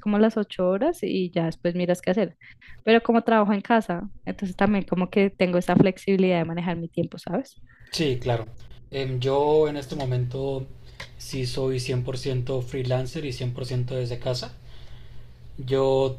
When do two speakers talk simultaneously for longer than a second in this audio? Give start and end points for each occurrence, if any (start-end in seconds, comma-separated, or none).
none